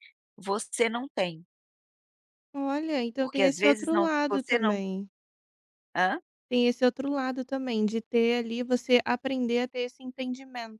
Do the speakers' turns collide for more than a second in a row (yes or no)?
yes